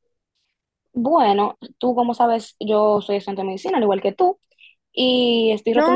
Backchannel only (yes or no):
no